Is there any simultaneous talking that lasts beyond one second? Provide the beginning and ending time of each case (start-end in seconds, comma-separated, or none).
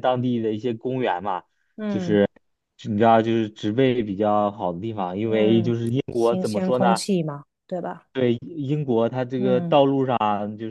5.2-7.0